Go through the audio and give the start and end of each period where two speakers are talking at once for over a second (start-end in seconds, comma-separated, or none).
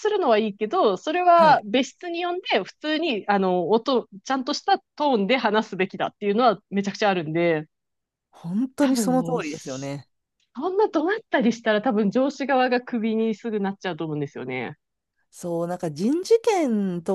8.8-10.1